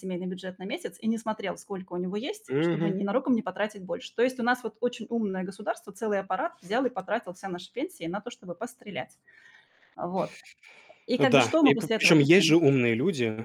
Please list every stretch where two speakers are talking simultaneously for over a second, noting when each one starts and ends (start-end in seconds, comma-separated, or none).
11.2-12.6